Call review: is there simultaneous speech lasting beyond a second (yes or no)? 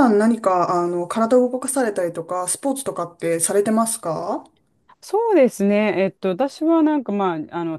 no